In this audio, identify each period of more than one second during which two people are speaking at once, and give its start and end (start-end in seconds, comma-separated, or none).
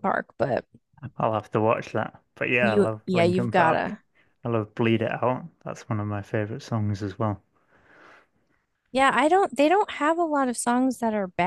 2.6-4.0